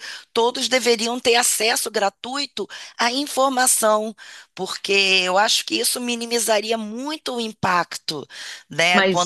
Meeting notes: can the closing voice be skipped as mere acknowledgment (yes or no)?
no